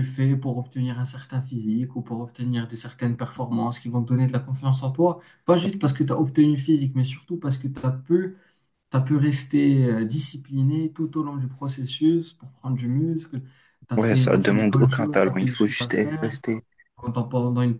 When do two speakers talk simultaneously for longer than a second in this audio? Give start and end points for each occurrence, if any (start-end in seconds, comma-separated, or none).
14.0-16.4